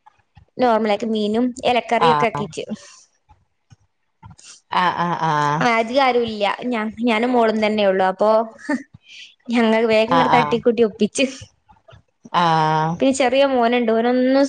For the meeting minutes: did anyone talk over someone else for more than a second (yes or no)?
no